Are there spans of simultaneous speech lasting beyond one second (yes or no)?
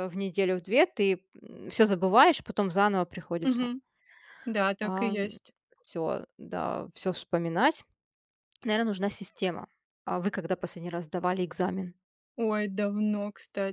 no